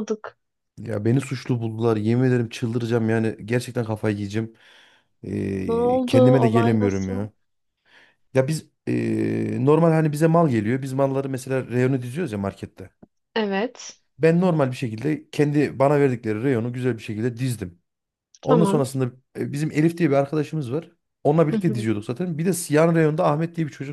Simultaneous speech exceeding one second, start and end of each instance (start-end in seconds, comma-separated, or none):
5.7-7.3